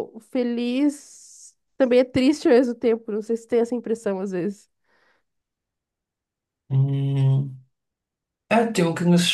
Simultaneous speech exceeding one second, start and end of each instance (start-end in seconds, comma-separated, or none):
none